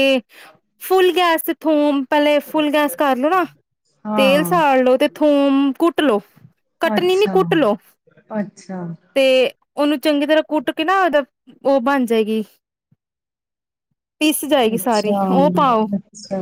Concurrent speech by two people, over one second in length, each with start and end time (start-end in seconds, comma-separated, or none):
none